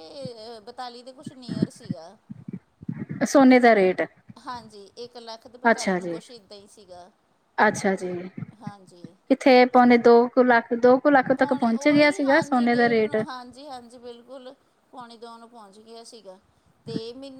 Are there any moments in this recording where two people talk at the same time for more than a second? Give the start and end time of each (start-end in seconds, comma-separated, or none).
11.3-13.2